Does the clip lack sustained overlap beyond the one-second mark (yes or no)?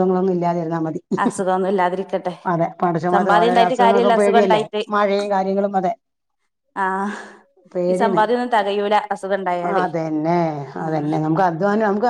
no